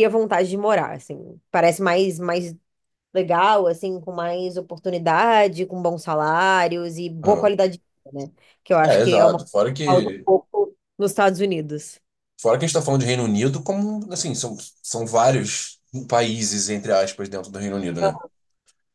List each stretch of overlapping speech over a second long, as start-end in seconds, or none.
8.8-10.1